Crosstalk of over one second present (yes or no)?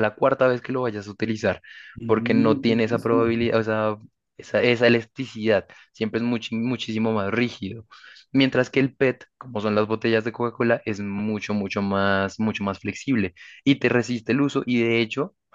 yes